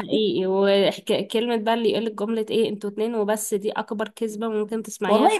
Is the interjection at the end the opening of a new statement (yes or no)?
yes